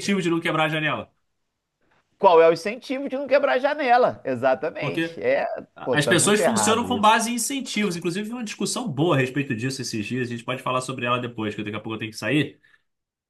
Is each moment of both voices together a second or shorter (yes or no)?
no